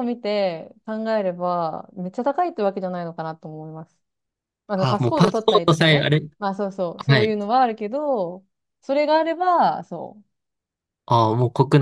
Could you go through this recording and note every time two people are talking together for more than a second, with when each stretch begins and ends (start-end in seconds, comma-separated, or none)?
4.8-6.2